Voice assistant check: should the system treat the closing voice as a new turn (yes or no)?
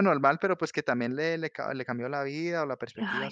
yes